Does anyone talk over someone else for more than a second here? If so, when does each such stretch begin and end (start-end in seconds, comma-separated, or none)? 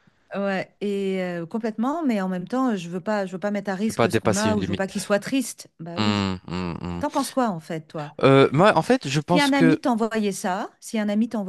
3.8-5.1